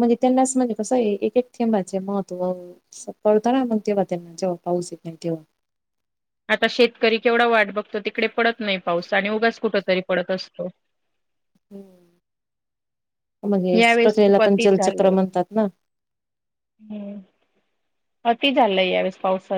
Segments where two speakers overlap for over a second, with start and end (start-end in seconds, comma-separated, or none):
13.8-15.1